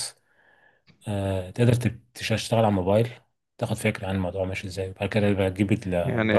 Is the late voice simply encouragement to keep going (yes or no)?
no